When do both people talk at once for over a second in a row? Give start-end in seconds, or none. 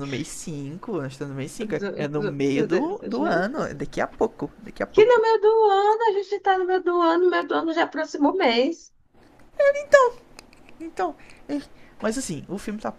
1.6-3.8